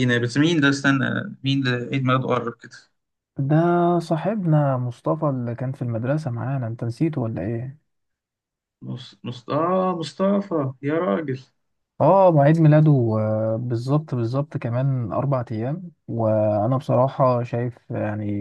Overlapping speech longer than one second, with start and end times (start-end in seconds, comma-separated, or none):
none